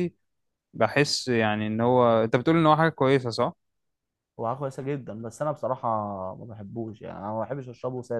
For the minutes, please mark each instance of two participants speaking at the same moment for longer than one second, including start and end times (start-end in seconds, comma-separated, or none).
none